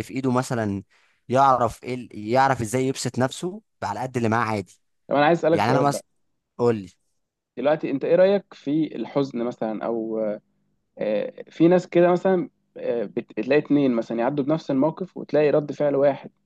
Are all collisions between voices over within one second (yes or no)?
yes